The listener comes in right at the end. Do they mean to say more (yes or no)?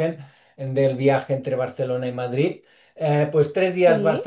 no